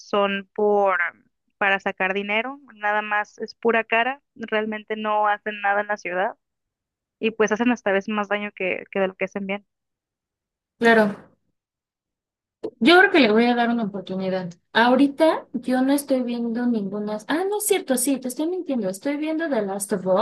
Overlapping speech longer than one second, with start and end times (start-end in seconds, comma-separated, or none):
none